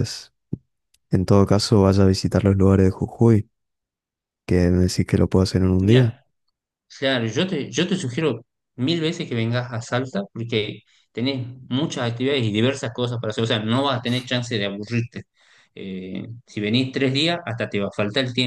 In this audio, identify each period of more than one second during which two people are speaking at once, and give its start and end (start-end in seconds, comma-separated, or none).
none